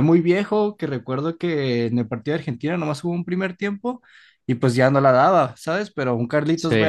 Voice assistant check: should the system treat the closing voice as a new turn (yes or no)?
no